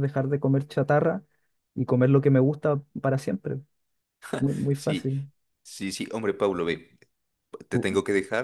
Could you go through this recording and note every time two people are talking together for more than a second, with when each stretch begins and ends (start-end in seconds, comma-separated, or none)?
none